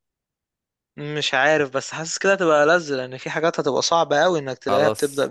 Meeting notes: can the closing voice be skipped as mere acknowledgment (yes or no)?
no